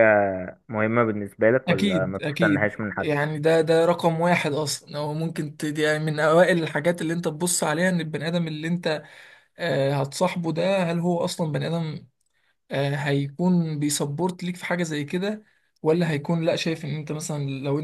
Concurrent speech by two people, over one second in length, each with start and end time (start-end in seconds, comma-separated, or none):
1.7-3.1